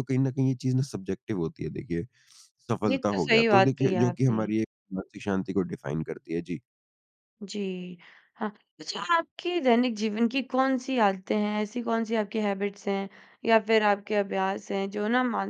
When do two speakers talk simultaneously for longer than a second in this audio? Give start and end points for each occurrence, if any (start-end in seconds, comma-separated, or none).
2.9-4.5